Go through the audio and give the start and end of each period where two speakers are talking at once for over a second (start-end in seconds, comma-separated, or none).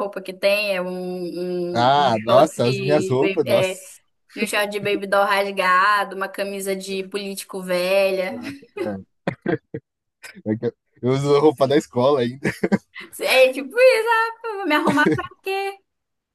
1.7-3.8